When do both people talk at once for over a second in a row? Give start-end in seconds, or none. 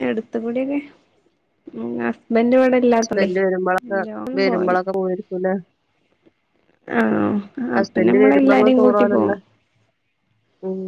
7.8-9.4